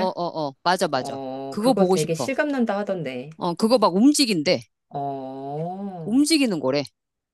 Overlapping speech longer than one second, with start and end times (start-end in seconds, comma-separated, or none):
0.9-2.3